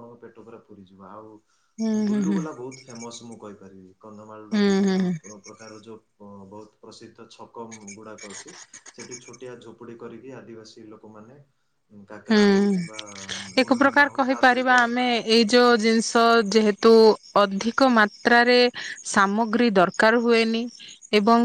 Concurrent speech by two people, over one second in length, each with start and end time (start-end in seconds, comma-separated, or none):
none